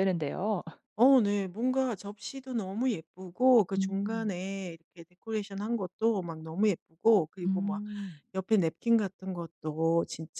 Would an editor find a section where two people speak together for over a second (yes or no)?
no